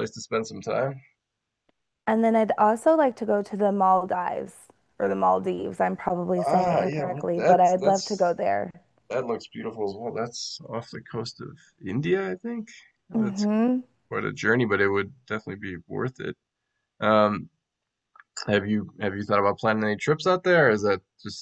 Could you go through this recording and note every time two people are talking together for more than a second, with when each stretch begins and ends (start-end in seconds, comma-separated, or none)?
6.5-8.4